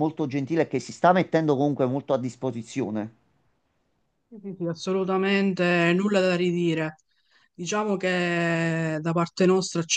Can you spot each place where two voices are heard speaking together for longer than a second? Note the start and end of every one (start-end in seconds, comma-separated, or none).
none